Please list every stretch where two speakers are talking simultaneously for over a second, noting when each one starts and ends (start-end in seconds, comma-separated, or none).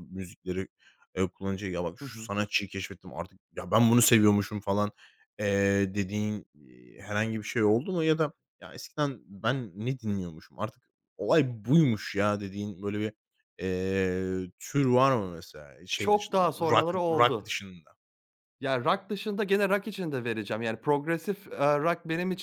16.0-17.6